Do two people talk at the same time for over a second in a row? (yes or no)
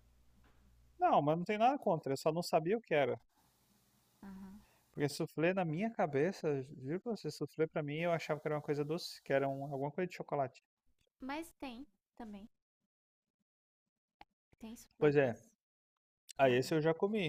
no